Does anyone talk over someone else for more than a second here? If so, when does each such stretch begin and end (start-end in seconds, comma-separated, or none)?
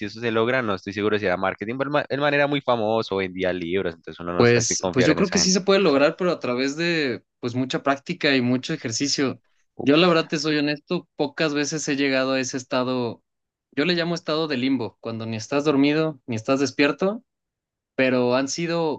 4.3-5.6